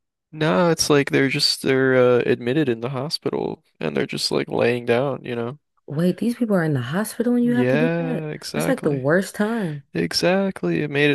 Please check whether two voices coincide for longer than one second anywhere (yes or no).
yes